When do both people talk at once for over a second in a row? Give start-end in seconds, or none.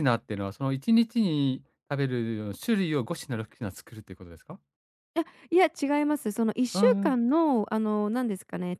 none